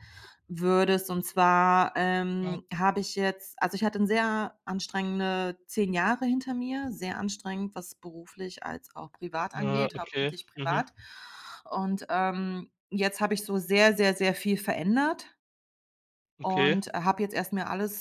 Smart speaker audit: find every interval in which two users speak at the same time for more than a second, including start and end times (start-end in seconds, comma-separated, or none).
9.6-10.8